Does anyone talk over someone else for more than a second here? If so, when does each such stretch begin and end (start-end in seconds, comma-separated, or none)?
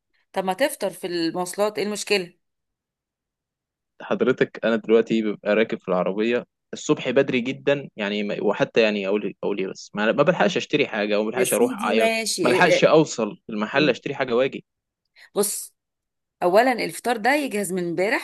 11.3-12.9